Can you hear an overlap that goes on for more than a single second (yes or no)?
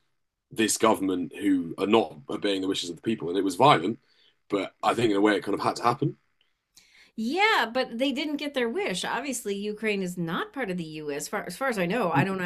no